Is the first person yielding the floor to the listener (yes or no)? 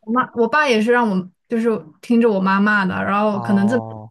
no